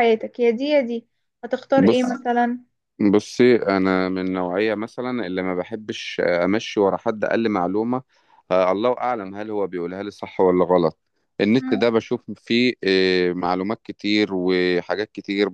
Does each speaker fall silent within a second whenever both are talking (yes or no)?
yes